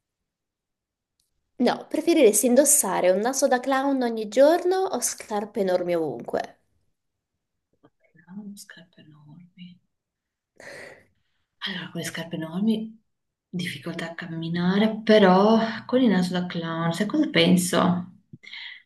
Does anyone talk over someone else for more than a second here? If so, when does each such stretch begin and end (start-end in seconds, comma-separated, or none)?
none